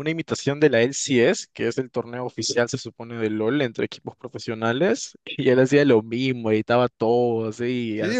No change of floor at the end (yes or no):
no